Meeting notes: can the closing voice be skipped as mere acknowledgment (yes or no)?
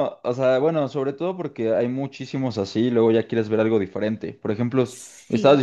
yes